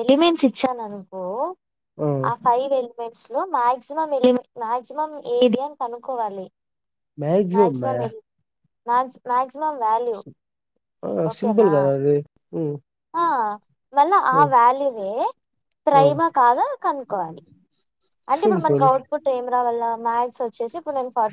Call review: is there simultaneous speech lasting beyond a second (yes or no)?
no